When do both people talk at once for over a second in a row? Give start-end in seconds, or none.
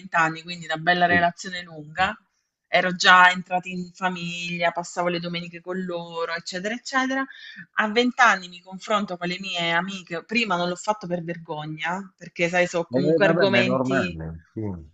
12.9-14.2